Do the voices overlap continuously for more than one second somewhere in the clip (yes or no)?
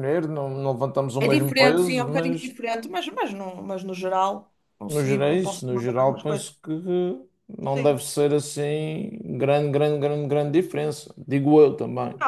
yes